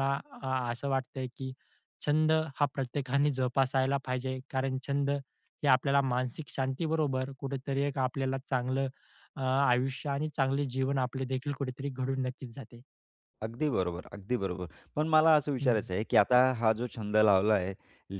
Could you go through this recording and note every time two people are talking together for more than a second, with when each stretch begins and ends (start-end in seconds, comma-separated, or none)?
none